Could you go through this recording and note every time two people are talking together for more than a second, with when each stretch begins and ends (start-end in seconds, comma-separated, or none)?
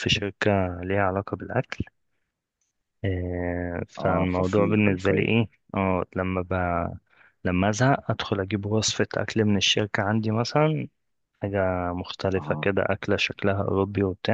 4.0-5.3